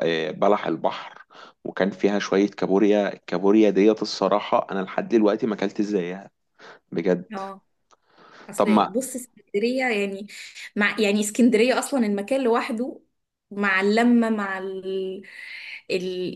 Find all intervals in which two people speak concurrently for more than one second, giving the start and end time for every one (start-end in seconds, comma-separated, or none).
none